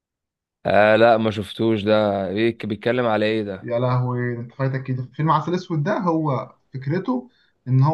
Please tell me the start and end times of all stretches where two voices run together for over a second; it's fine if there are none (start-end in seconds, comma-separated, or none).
none